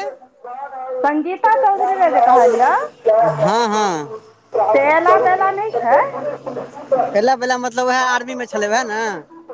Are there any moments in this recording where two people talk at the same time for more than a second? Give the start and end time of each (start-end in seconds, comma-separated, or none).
none